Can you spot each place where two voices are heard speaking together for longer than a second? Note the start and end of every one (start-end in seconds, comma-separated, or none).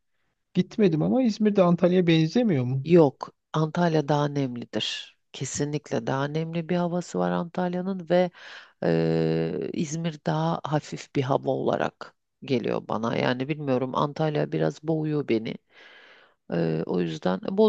none